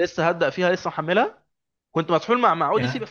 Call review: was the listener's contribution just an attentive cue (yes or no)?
yes